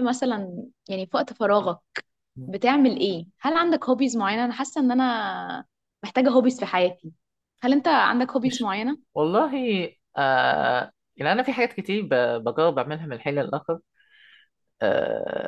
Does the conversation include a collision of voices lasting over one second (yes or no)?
no